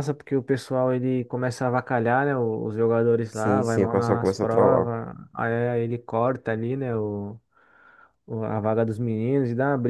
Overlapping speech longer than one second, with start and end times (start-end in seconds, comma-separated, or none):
3.3-4.9